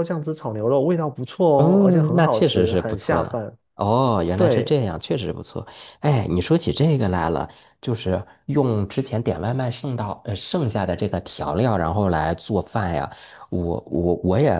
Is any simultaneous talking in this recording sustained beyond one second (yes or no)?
yes